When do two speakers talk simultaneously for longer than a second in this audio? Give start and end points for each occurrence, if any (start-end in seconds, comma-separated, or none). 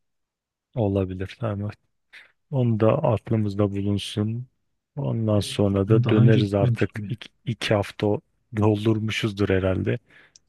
5.4-7.1